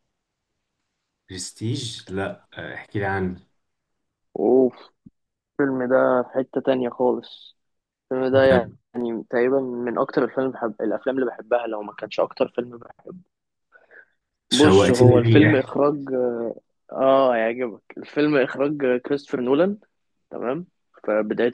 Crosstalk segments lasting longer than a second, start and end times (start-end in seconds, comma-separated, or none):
14.5-15.7